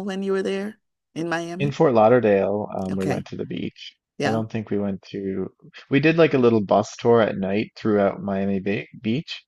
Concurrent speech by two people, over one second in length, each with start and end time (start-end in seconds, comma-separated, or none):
none